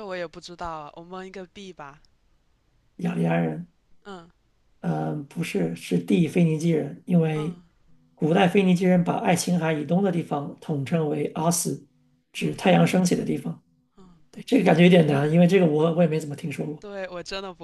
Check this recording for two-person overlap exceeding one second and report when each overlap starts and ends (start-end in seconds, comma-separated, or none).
none